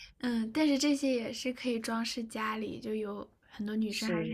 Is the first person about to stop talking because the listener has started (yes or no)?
yes